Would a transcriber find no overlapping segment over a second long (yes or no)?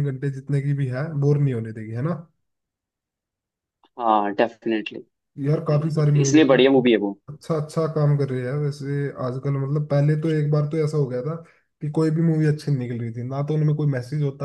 no